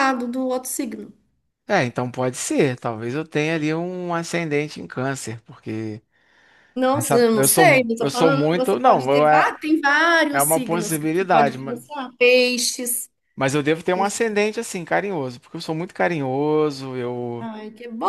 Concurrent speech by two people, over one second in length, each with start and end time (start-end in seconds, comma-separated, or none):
7.0-9.6, 10.3-11.8